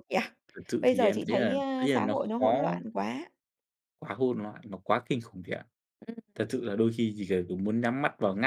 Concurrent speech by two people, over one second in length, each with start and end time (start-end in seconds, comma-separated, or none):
0.8-2.8